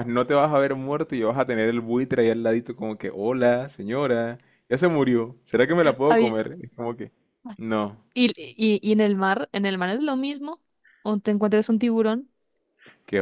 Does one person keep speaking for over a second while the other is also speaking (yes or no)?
no